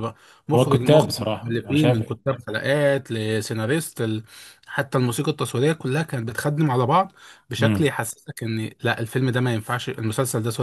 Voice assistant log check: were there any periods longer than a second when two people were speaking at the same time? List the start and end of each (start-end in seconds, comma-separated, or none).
0.6-2.0